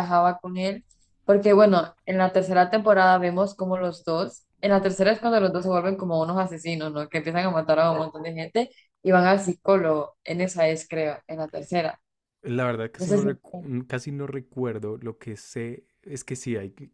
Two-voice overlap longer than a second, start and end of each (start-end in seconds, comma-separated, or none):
none